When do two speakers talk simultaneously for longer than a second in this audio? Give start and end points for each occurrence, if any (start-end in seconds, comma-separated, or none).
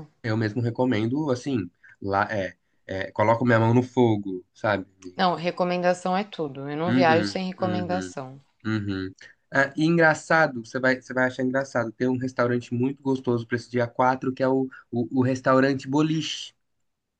6.9-8.1